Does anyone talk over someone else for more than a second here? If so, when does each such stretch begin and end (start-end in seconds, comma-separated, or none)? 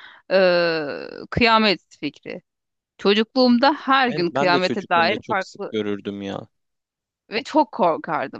4.0-5.8